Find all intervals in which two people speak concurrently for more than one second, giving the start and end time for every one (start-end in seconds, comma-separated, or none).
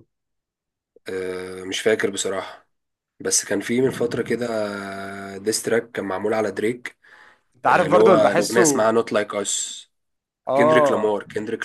7.7-8.9